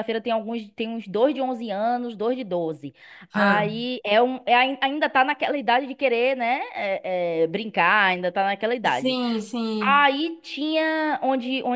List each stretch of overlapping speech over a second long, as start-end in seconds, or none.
none